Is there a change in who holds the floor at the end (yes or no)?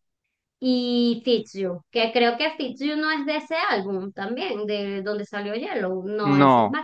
yes